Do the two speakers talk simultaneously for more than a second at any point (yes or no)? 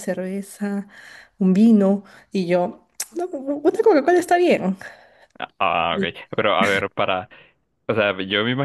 no